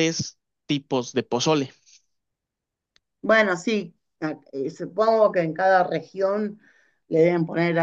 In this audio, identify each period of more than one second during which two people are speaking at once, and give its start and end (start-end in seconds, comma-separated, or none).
none